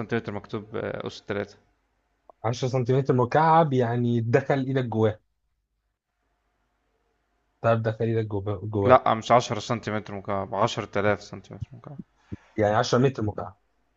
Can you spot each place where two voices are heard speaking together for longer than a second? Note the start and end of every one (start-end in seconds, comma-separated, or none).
none